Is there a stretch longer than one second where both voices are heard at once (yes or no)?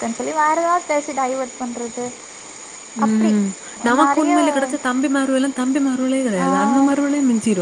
no